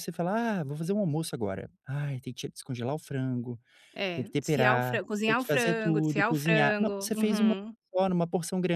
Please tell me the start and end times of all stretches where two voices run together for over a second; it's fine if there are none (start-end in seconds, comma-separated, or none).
4.1-7.5